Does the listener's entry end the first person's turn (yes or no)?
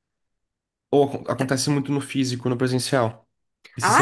yes